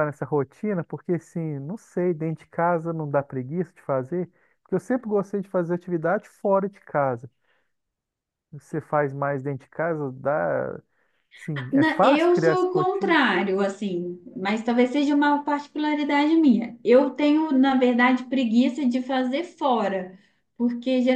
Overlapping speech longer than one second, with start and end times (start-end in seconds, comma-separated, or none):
11.7-13.2